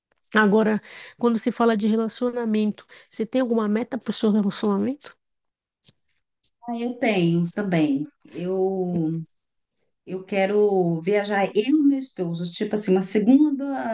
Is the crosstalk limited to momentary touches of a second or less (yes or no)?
yes